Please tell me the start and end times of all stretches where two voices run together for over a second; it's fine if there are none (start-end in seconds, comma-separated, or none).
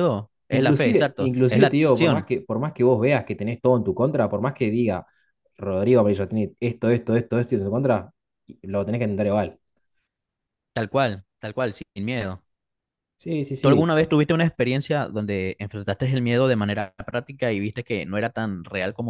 0.5-2.3